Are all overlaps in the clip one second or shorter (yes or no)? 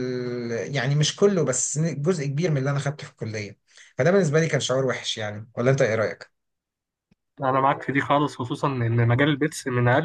yes